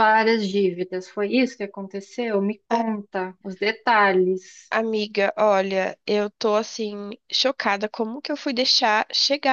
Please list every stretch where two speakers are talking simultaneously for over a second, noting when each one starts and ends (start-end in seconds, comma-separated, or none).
none